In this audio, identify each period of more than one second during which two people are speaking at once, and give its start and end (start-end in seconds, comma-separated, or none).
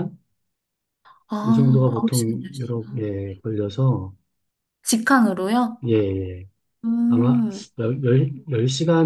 1.4-3.1